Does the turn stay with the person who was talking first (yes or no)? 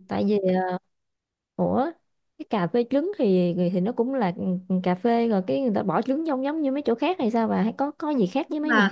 no